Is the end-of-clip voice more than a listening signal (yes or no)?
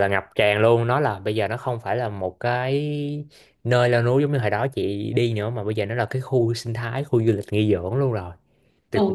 yes